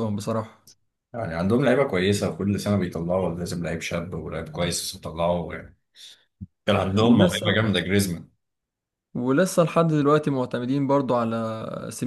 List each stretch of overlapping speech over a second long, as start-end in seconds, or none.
none